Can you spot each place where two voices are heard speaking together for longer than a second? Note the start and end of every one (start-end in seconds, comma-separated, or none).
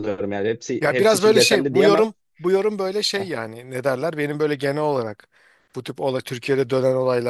0.8-2.1